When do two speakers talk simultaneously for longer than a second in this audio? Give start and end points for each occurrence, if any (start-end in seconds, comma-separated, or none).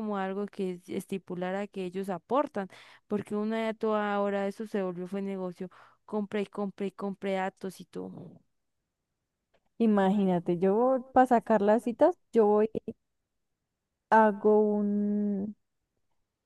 9.9-11.9